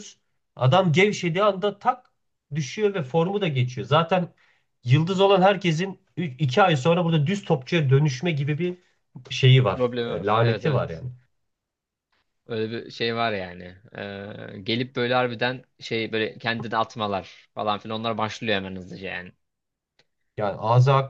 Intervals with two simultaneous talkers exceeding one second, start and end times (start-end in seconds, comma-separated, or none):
9.7-11.0